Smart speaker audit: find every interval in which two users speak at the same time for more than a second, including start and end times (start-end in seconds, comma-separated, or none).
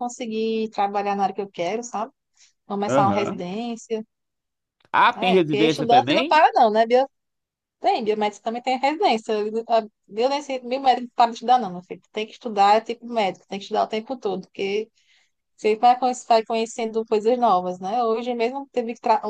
5.2-6.4